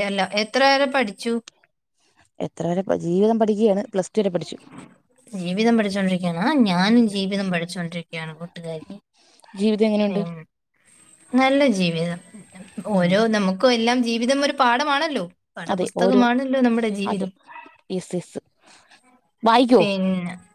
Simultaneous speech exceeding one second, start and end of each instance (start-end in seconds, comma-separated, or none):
none